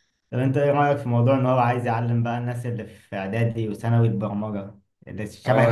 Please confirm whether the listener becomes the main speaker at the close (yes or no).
yes